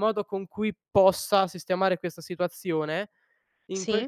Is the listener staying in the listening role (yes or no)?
yes